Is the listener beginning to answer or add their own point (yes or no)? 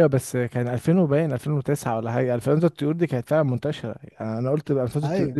no